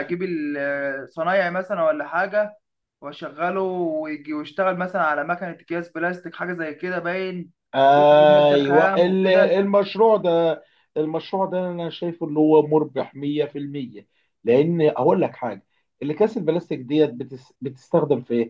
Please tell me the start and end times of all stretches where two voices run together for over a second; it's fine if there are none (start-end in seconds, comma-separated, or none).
7.7-9.6